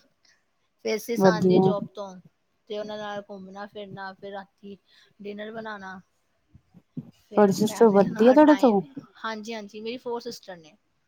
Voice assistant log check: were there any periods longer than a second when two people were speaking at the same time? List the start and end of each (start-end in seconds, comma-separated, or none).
7.3-8.8